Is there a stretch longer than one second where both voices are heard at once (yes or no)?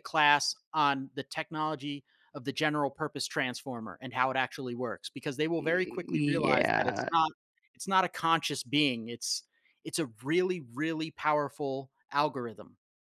yes